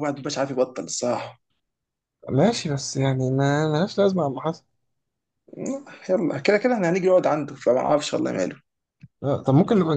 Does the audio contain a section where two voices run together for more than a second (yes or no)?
no